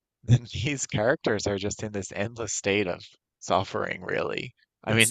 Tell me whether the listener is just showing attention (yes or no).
yes